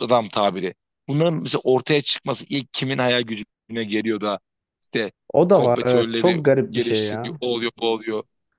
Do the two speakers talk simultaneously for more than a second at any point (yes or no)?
yes